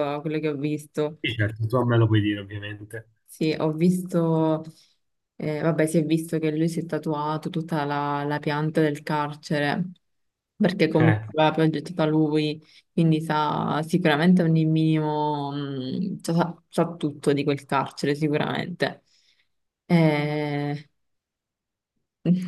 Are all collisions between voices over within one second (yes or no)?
yes